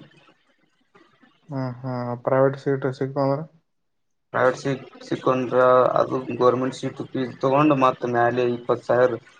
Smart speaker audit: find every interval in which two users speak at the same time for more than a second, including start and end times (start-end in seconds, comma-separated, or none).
none